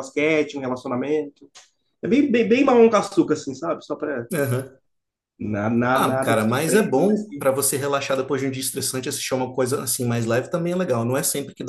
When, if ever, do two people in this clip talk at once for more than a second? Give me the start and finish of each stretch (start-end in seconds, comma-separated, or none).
6.0-7.2